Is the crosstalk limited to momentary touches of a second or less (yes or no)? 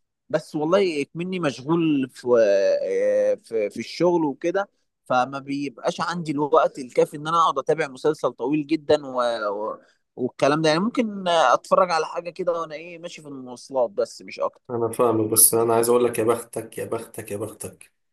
yes